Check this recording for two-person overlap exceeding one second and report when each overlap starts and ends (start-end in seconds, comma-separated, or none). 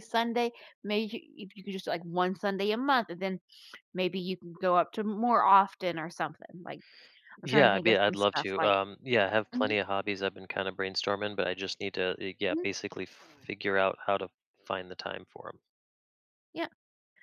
7.4-8.7